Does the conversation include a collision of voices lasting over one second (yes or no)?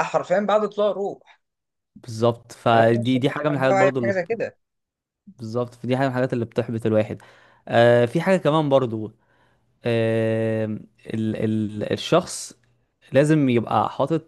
yes